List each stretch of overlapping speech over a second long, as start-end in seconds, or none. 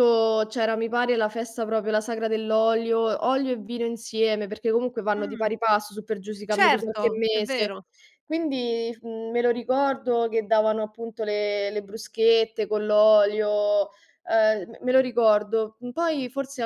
6.5-7.7